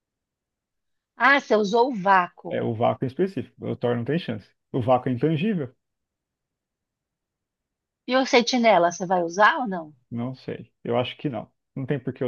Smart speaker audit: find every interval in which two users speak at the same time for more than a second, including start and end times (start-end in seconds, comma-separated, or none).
none